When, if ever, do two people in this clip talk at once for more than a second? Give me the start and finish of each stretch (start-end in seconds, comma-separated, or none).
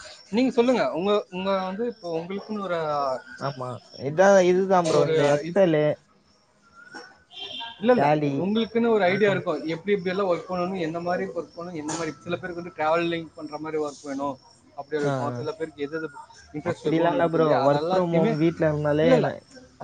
16.7-18.3